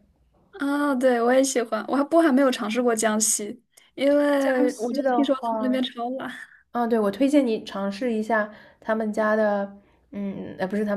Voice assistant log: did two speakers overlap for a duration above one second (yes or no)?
yes